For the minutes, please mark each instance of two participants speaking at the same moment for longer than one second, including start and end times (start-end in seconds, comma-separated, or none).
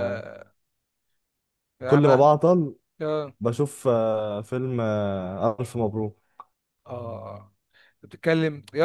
none